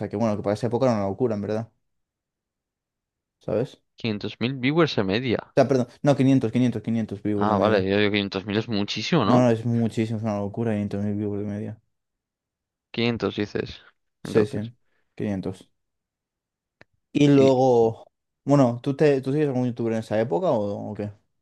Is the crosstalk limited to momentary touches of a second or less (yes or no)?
yes